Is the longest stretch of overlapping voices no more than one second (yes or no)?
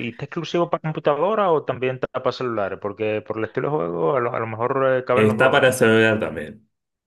yes